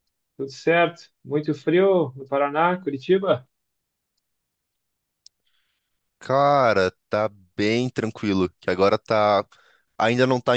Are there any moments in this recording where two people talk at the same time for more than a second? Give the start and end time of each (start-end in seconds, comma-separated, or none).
none